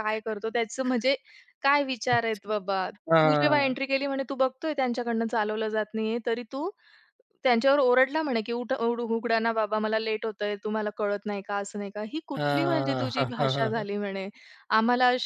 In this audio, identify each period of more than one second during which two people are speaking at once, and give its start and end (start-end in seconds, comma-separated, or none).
12.4-13.9